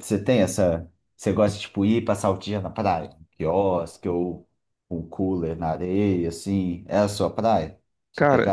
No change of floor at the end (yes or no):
no